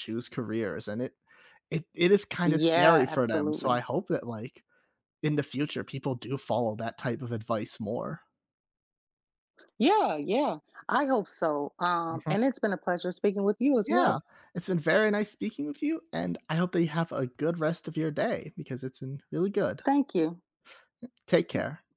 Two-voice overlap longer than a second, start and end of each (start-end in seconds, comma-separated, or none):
2.4-3.7